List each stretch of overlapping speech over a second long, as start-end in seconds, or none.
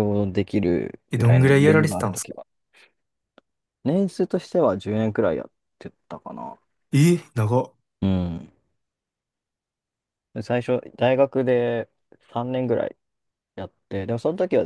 1.1-2.4